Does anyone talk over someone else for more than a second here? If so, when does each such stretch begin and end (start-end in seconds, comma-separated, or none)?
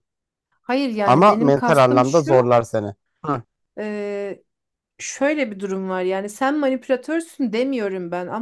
1.0-2.5